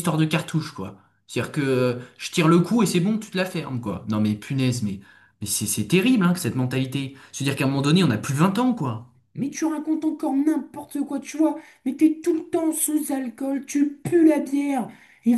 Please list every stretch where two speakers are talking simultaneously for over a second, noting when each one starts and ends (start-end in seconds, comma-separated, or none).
none